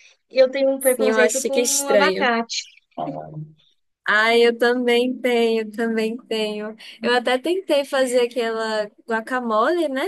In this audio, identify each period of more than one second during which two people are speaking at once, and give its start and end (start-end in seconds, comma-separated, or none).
0.8-2.3